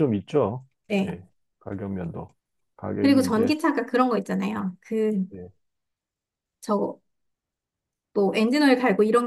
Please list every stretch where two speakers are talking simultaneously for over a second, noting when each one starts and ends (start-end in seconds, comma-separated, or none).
none